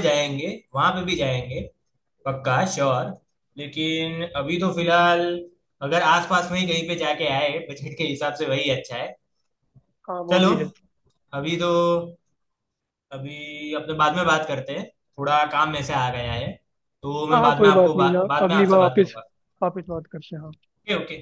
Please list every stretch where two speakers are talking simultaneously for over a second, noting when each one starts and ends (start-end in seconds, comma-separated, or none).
17.3-19.2